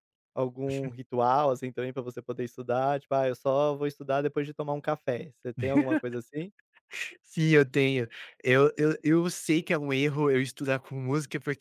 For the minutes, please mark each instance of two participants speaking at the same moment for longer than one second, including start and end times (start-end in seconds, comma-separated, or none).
none